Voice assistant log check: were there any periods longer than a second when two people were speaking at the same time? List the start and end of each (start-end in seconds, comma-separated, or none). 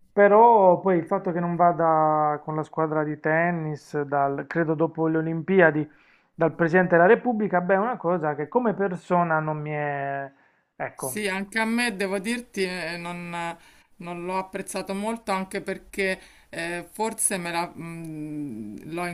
none